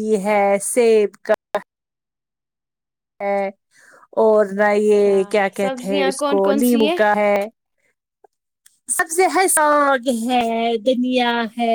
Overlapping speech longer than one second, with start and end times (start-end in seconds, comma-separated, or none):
4.8-6.9